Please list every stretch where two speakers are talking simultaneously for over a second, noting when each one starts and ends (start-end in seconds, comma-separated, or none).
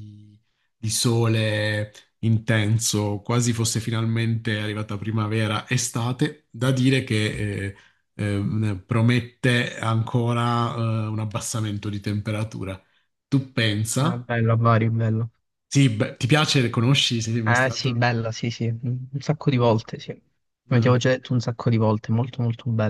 none